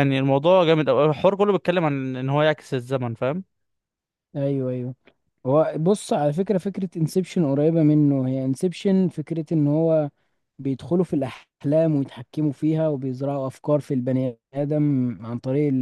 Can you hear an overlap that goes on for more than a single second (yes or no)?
no